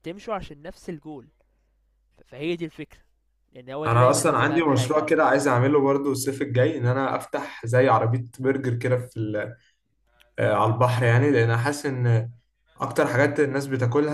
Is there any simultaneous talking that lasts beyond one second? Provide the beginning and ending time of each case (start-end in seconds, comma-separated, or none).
3.9-5.1